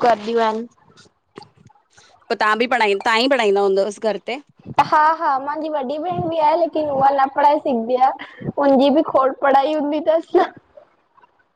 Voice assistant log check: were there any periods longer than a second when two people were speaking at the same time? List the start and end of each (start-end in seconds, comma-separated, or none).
none